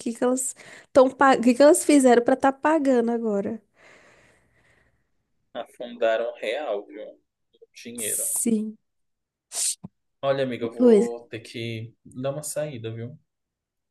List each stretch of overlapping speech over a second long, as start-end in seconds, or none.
none